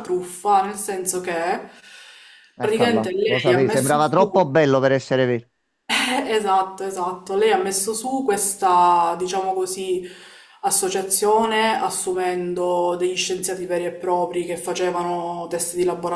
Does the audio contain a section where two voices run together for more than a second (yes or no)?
yes